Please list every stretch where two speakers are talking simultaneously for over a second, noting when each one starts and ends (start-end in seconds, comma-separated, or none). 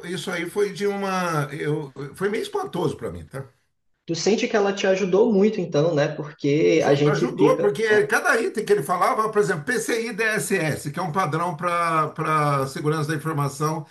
6.8-8.1